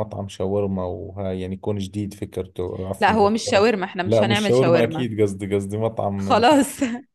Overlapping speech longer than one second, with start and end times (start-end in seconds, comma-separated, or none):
3.0-5.1